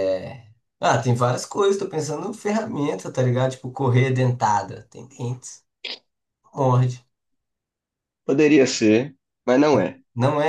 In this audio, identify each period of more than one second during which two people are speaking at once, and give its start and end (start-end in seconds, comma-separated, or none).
none